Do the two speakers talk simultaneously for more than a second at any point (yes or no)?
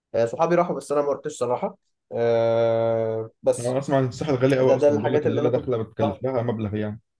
yes